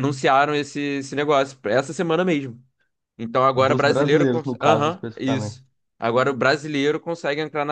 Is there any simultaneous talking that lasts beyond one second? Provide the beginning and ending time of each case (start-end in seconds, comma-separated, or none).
3.5-5.5